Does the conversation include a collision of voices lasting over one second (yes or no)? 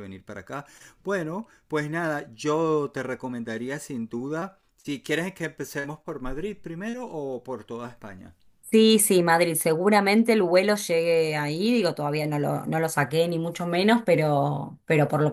no